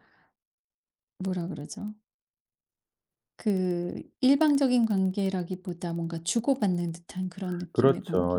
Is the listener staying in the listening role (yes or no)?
no